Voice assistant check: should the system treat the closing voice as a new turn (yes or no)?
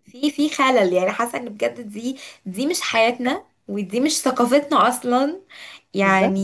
no